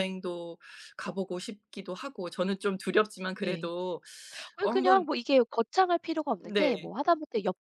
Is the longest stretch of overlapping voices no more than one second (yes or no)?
yes